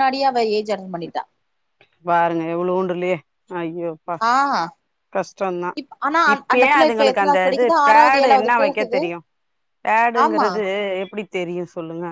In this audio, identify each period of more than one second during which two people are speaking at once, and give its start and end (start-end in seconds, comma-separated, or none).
6.3-9.0